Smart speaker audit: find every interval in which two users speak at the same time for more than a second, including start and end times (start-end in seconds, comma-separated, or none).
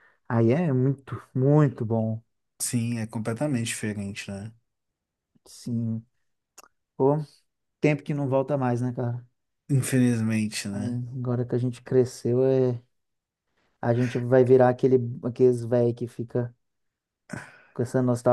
none